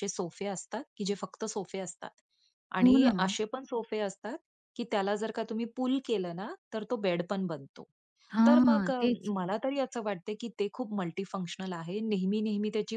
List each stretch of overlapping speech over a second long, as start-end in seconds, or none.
none